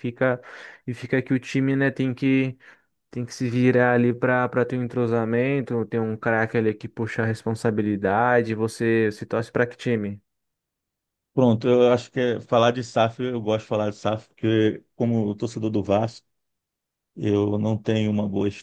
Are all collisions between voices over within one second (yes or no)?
yes